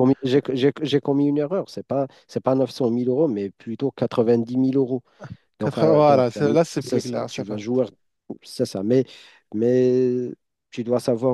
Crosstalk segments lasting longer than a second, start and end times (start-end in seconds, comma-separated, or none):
5.6-7.6